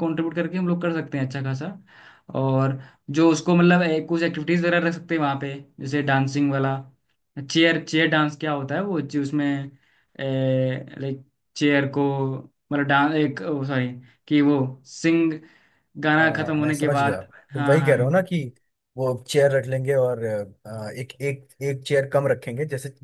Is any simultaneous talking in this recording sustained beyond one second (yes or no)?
yes